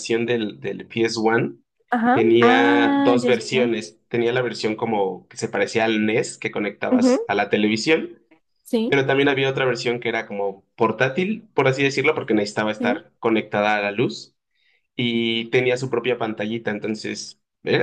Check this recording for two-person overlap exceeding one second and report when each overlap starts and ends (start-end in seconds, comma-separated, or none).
2.1-3.7